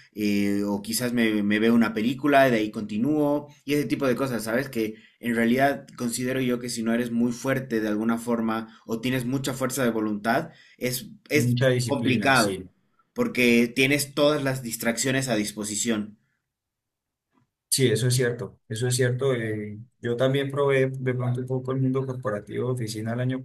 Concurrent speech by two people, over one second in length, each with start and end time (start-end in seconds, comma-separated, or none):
11.3-12.6